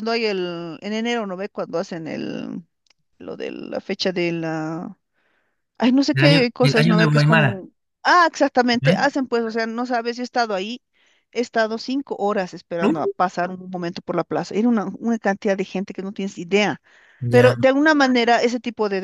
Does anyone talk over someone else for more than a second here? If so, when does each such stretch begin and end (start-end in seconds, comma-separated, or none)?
6.1-7.6